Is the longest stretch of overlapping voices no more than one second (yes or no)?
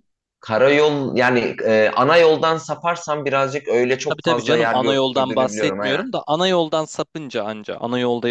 no